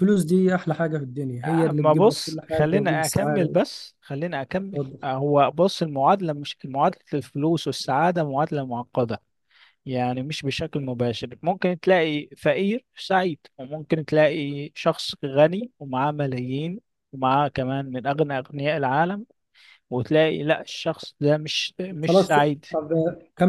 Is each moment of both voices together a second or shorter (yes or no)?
no